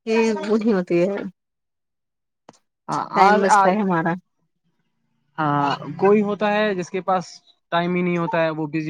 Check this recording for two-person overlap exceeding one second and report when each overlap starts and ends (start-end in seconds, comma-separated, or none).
none